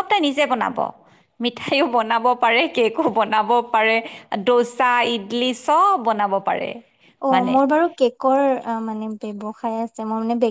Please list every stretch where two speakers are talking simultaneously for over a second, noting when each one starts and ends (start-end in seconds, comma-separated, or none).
none